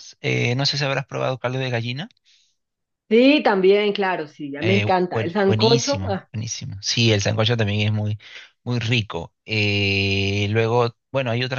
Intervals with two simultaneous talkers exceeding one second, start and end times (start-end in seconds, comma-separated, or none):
4.6-6.3